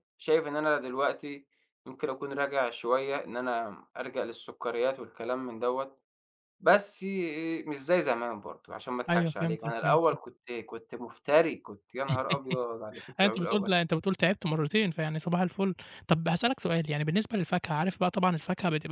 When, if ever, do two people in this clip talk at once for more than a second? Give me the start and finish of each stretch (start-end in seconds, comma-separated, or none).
9.1-10.3